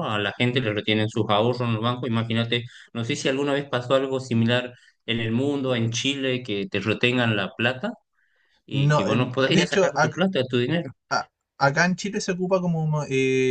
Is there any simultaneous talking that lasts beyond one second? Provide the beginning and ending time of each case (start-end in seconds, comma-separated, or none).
8.7-10.2